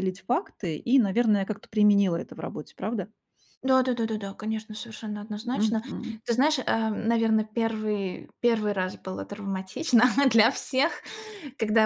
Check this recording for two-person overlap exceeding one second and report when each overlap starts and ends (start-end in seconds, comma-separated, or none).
none